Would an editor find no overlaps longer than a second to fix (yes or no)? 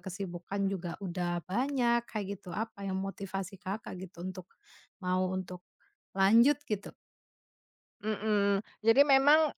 yes